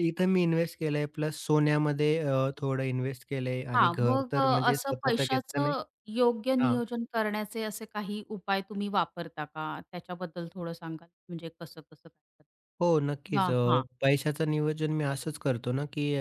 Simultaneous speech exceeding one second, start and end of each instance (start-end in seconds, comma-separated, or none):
3.7-5.7